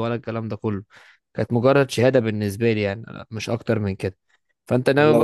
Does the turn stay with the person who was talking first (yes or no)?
no